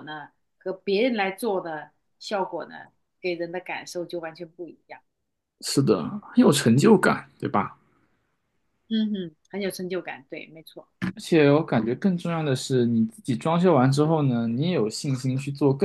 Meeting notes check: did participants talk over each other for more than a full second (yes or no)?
no